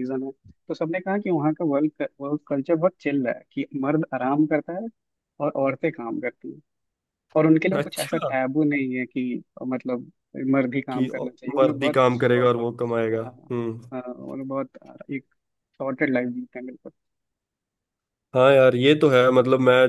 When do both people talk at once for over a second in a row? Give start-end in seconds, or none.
10.9-12.5